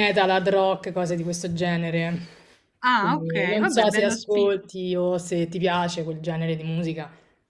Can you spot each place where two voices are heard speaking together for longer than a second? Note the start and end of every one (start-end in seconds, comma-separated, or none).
3.0-4.5